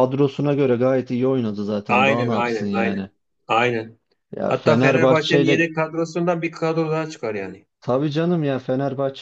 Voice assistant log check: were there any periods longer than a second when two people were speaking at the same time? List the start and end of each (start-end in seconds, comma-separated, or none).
1.9-3.1, 4.5-5.7